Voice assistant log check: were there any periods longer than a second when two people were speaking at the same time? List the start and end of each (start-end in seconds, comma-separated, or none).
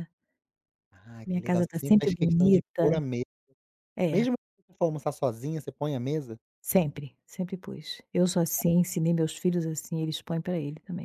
1.2-2.8